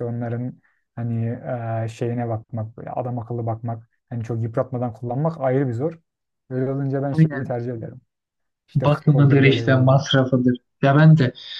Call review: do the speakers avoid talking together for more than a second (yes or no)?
no